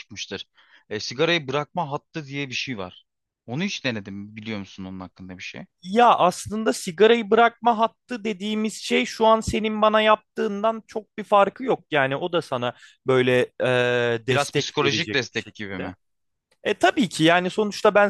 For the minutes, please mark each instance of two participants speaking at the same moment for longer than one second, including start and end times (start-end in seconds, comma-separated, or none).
14.3-15.9